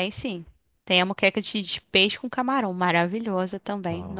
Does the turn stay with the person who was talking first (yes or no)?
yes